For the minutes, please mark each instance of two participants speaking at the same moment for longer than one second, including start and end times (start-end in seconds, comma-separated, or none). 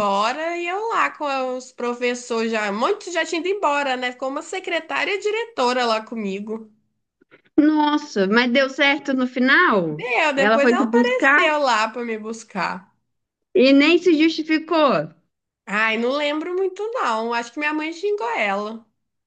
9.9-11.4